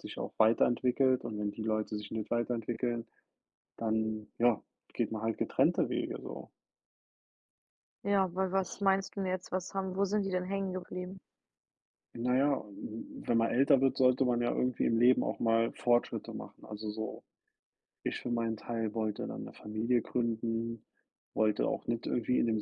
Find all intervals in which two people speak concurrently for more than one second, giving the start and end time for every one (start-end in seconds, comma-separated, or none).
none